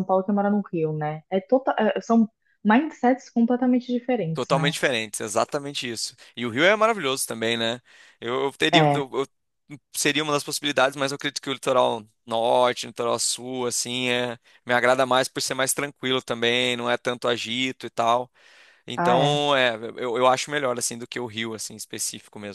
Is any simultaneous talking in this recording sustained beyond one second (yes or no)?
no